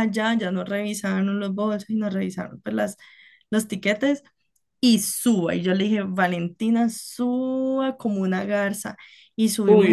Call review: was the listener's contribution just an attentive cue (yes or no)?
no